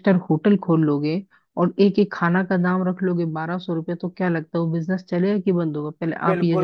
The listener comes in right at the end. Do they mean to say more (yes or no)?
yes